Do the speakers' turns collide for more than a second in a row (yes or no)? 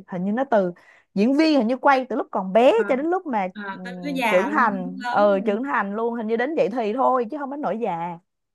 yes